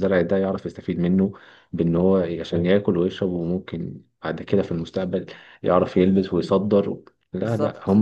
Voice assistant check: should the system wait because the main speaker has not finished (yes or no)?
yes